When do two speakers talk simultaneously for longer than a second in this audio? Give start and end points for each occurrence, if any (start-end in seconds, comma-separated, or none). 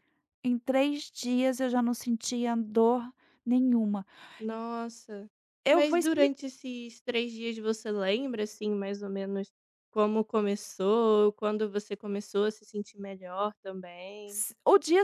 none